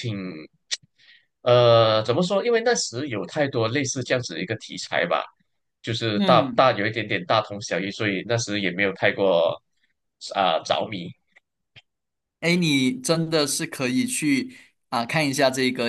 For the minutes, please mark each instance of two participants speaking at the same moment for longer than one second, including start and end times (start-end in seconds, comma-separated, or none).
none